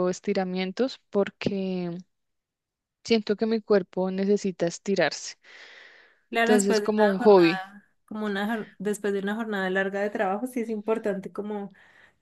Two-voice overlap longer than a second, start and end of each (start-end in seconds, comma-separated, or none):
6.4-7.6